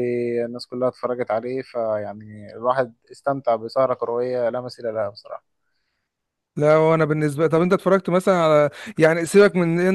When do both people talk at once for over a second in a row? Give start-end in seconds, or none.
none